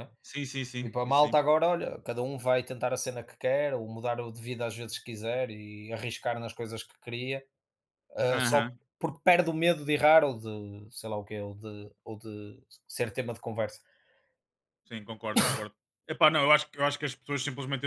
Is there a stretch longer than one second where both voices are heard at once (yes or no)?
no